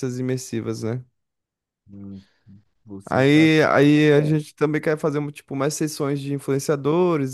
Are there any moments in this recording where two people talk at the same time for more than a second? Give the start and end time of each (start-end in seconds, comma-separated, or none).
3.1-4.4